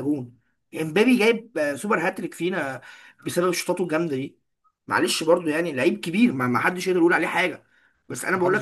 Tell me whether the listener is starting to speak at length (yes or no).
no